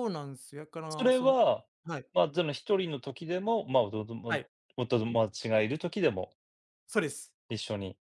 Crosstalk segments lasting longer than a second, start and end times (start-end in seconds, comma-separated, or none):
none